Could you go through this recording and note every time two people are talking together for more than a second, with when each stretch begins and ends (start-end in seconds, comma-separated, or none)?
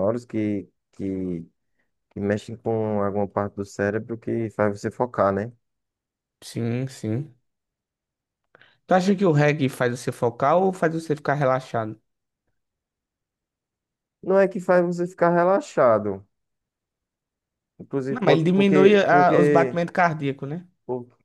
18.1-19.8